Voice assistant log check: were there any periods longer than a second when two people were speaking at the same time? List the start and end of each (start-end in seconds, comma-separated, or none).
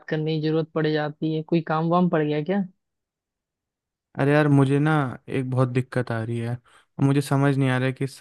none